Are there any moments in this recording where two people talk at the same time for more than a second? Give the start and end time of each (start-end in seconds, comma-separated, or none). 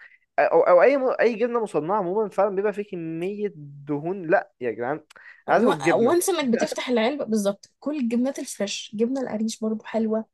none